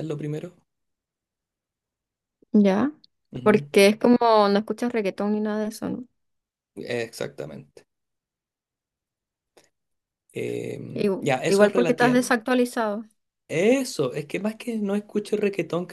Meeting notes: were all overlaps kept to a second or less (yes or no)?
no